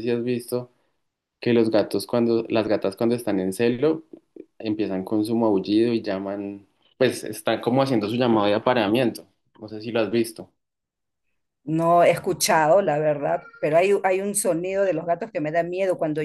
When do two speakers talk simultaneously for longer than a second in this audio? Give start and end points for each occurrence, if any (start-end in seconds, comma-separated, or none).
none